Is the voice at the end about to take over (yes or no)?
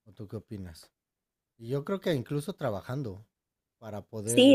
yes